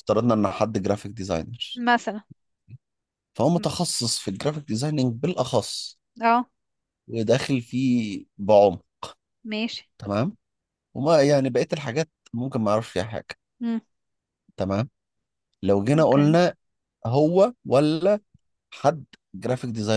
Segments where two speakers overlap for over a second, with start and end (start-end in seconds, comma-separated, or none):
none